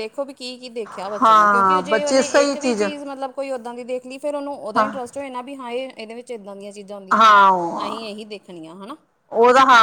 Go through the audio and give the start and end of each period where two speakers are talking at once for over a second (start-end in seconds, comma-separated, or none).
1.2-2.5